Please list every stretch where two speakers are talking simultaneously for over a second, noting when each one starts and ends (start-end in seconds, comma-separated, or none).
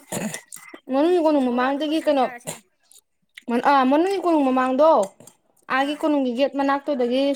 0.9-2.2